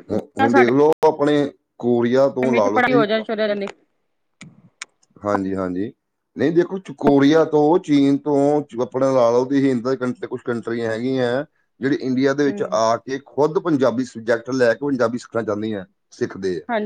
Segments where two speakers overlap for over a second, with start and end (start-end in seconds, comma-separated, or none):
none